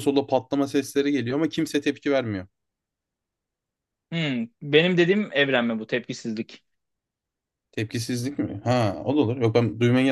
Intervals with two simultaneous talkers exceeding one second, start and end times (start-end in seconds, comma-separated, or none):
none